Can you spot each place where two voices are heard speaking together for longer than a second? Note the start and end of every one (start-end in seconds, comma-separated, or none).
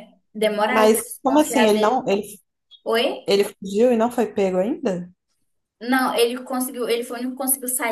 0.7-2.1